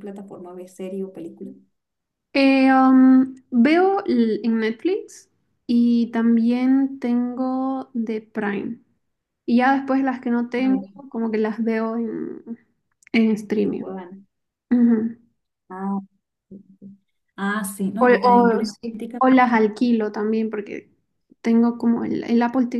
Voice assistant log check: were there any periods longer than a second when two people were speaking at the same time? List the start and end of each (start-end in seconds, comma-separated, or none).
18.0-19.2